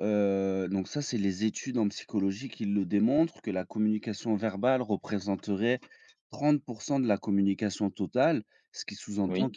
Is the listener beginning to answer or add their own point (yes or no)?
no